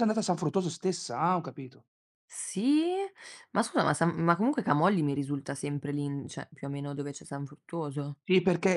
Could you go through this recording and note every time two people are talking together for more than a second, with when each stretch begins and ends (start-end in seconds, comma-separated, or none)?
none